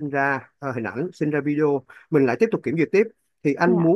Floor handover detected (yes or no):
no